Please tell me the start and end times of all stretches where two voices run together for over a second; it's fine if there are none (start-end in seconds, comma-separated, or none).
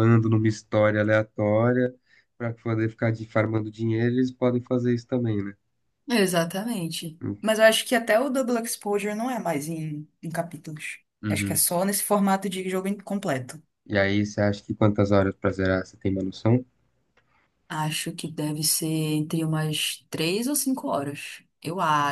none